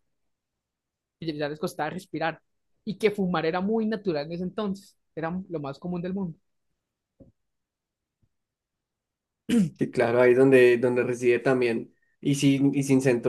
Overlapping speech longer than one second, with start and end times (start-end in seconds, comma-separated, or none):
none